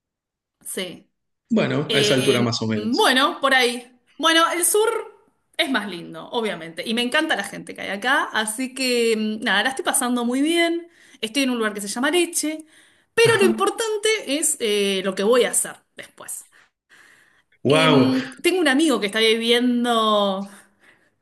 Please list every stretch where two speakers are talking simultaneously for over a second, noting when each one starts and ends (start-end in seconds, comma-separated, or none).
1.9-3.2